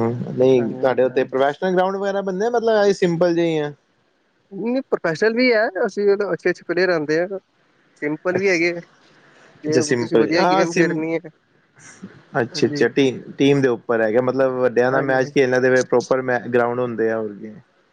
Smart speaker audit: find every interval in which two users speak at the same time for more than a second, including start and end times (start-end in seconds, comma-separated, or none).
9.7-11.0